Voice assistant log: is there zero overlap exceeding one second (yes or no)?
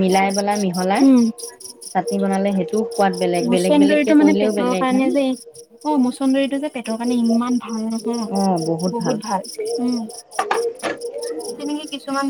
yes